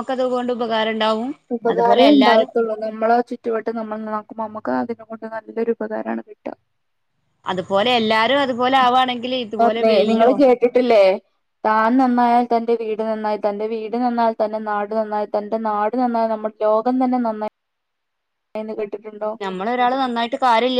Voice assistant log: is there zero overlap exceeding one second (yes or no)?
yes